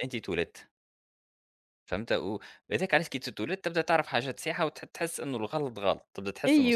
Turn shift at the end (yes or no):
yes